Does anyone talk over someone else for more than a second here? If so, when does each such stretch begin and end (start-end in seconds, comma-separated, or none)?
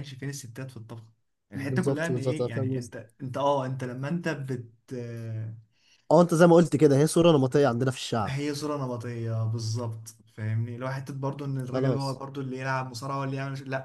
1.5-2.9